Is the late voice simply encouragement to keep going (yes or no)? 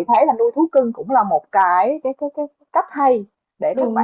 yes